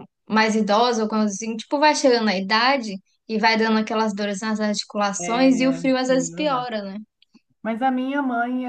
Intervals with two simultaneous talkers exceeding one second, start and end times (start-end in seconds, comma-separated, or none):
5.2-6.7